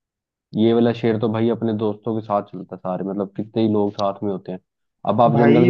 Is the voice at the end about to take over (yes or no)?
yes